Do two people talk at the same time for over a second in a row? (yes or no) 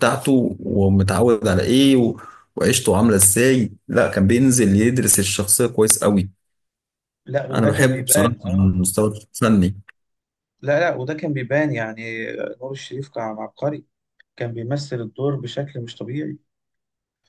yes